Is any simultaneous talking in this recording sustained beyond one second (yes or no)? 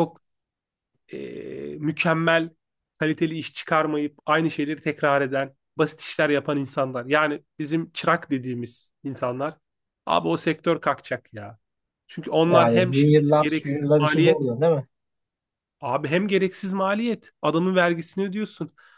yes